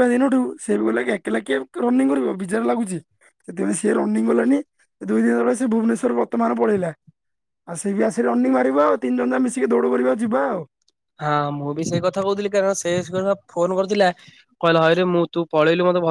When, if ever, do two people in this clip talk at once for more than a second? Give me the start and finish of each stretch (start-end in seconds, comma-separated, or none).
none